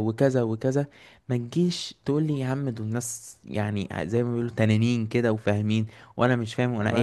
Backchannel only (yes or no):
no